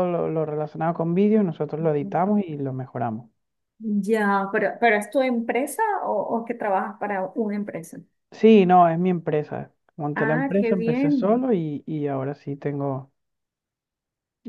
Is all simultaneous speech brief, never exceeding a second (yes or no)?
no